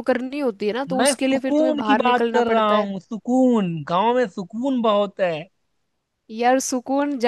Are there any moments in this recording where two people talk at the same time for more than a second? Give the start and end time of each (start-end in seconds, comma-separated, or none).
1.0-2.9